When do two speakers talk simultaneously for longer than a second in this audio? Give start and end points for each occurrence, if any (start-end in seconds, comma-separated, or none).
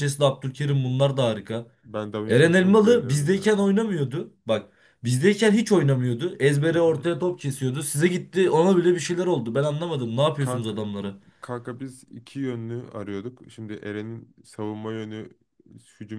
2.3-3.5